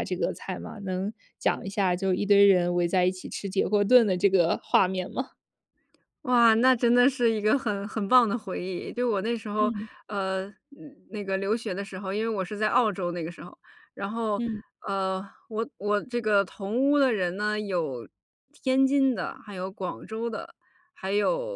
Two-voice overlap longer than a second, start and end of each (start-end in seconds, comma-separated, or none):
none